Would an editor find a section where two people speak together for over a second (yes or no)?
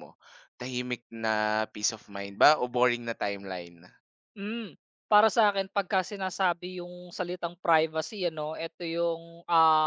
no